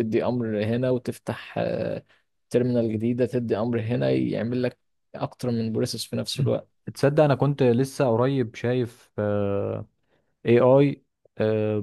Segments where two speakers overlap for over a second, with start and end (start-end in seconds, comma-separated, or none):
none